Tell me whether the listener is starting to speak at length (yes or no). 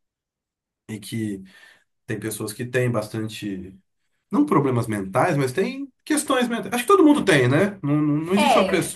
yes